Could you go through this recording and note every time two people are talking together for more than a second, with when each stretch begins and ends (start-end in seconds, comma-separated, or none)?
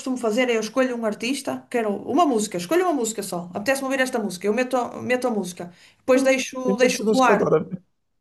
6.1-7.6